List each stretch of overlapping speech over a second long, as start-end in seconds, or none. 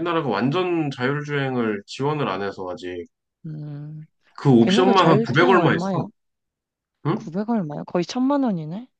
4.6-5.9